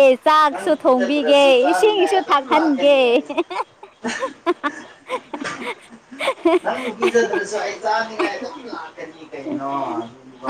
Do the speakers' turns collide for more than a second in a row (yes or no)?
yes